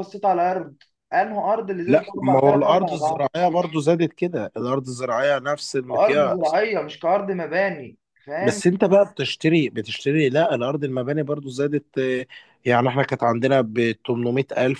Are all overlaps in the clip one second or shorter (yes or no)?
no